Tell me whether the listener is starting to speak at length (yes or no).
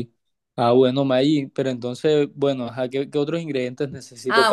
yes